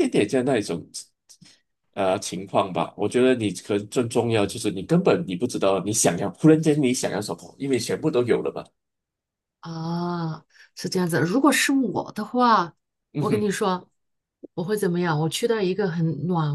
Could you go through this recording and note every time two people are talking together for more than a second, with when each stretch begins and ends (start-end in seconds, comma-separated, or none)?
none